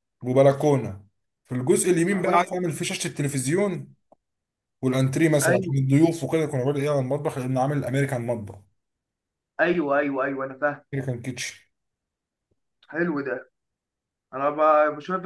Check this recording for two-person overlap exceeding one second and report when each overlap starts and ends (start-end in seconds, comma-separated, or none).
none